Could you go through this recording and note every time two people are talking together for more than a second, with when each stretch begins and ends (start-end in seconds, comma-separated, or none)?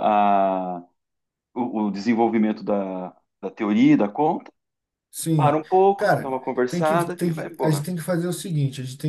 5.3-7.8